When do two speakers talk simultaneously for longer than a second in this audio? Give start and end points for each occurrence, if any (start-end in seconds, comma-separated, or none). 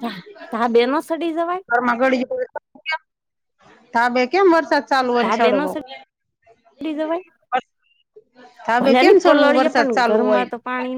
8.7-10.5